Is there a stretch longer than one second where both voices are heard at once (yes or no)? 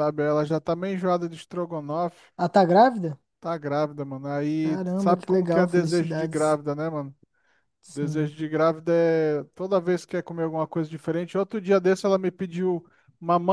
yes